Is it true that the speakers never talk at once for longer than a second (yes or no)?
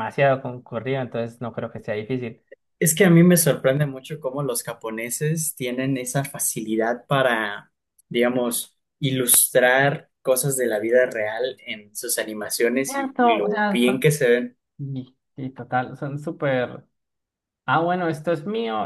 no